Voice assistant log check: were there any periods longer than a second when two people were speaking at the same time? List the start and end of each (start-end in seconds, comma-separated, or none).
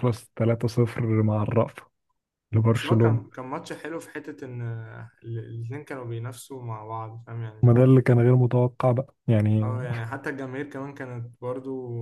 none